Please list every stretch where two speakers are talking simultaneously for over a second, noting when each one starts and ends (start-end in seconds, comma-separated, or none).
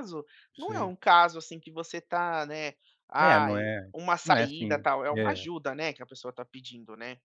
3.2-5.4